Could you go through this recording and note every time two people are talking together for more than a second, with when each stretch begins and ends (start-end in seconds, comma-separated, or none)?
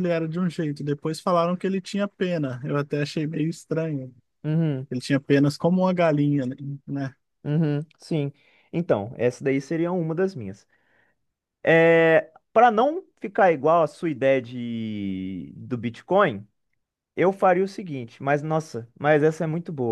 none